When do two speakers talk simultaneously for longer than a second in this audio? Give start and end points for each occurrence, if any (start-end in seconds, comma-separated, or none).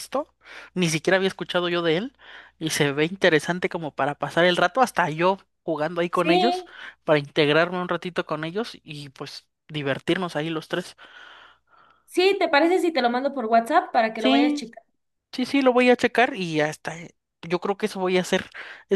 none